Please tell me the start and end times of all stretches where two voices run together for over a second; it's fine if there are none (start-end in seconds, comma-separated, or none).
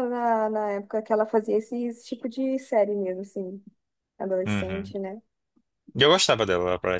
none